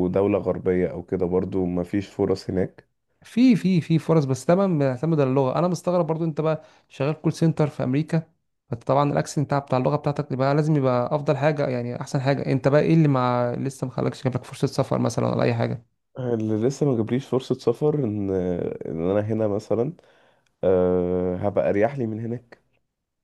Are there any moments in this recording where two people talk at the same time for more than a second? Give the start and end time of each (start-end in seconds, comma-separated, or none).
none